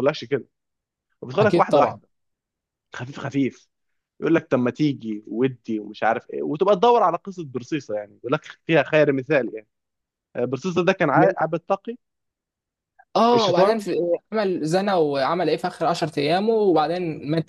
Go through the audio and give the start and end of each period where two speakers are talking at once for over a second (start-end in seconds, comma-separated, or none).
none